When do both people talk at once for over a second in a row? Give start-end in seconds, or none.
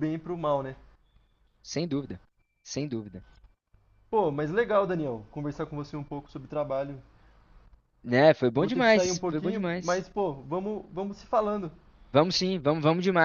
8.5-10.0